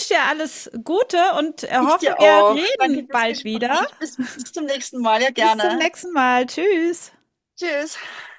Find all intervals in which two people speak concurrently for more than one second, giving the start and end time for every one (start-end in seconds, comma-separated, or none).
1.8-3.8